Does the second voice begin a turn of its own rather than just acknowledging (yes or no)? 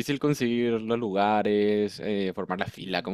yes